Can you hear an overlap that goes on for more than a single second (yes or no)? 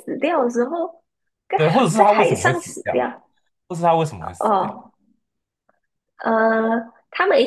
yes